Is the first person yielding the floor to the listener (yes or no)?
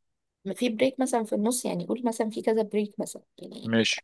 no